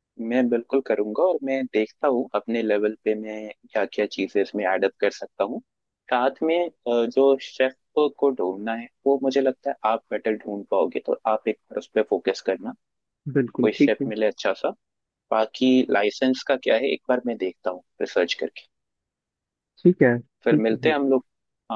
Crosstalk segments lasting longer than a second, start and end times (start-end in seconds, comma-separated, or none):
none